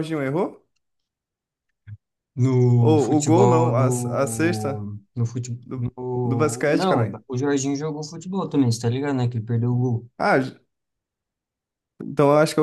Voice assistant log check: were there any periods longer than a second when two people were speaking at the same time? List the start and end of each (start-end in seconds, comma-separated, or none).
2.8-4.9, 5.6-7.2